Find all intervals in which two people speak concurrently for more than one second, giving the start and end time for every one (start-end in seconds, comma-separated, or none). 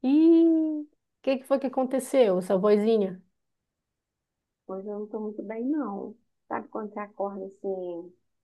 none